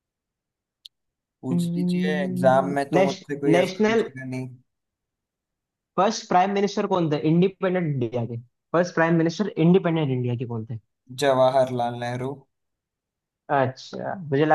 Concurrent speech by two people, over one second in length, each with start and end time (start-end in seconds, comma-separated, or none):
1.5-4.1